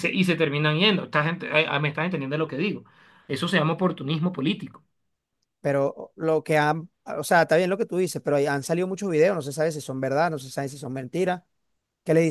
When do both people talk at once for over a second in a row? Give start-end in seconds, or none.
none